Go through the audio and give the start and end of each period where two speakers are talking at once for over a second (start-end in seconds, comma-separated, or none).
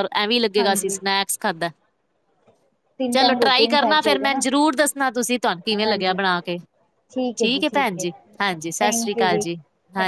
3.1-4.4